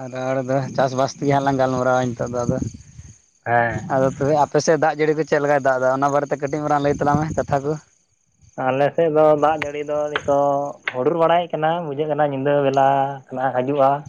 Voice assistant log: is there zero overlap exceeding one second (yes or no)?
yes